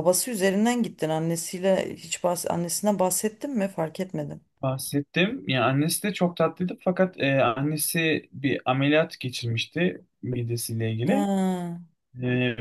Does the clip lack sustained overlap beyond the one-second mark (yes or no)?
yes